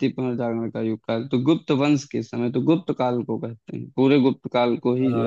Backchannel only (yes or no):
yes